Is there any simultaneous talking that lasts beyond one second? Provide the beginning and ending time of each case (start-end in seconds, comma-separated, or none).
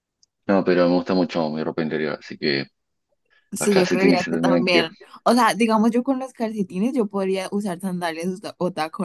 3.6-4.9